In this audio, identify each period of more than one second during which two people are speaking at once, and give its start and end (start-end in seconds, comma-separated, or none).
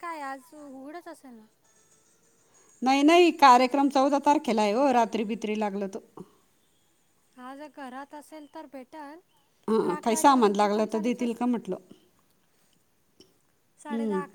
9.8-11.5